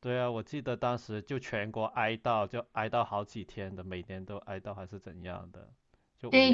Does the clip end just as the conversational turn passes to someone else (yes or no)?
yes